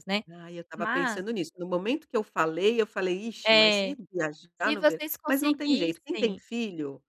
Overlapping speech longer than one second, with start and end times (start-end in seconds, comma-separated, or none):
4.6-6.4